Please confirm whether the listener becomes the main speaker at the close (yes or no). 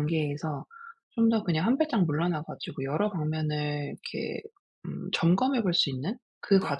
no